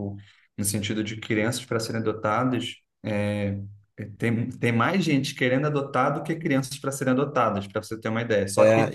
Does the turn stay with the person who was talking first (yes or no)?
no